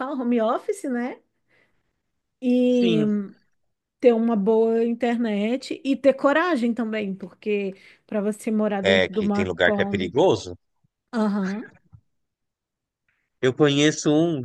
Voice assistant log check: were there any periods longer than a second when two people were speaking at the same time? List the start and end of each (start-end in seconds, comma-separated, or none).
8.8-10.1